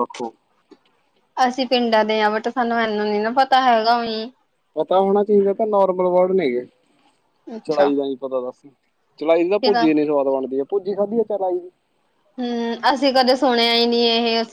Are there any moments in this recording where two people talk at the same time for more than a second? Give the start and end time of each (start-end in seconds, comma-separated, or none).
none